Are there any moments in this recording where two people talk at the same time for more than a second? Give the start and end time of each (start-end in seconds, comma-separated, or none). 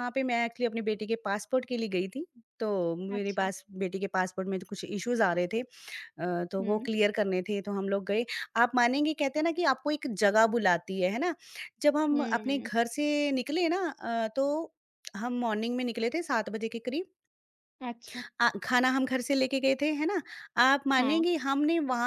none